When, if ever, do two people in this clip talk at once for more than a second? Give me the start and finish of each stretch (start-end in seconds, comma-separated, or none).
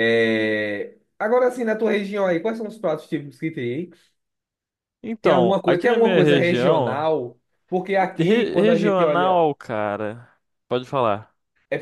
5.2-7.1, 8.2-9.4